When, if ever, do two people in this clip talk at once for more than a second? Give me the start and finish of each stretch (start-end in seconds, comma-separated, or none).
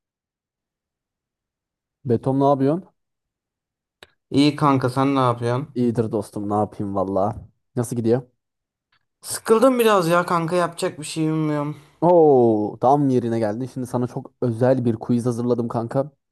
none